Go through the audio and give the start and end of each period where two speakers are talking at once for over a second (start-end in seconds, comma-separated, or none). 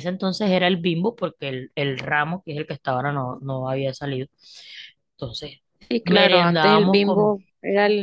6.0-7.4